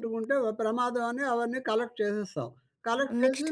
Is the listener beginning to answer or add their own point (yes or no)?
no